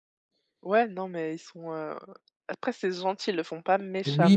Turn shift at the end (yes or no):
yes